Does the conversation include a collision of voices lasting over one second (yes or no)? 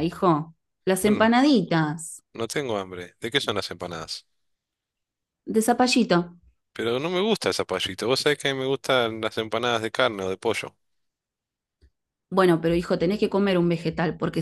no